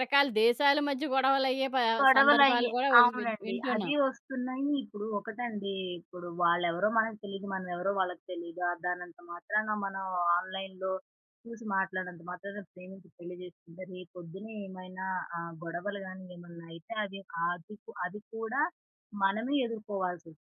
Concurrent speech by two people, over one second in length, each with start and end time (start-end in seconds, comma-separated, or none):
2.1-3.9